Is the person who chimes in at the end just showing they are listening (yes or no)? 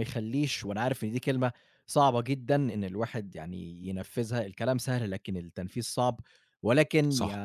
yes